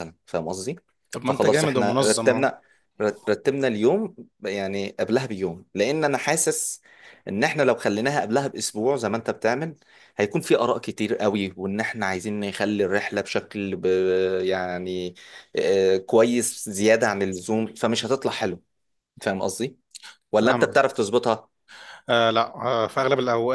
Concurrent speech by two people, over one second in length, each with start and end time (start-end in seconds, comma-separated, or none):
1.2-2.5